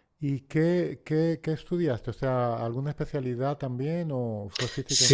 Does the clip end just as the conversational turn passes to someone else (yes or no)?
yes